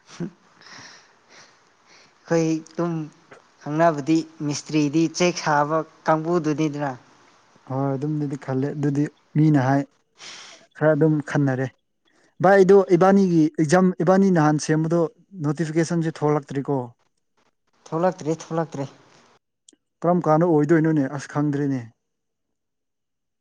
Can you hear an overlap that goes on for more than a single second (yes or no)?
no